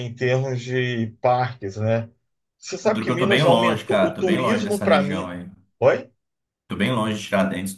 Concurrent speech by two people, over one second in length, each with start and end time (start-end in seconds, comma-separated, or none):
2.8-5.3